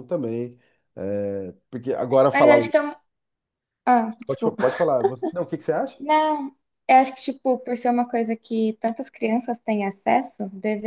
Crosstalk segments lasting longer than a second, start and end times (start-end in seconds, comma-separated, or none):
none